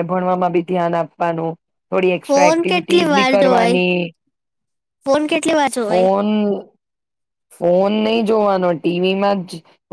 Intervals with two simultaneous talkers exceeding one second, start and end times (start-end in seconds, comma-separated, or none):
2.3-3.8